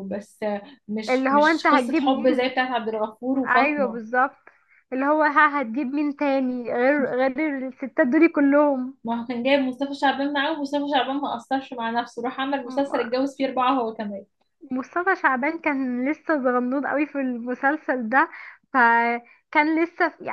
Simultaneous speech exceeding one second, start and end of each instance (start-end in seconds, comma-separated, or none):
1.1-2.5